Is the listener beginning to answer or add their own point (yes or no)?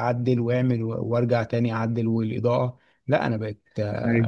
no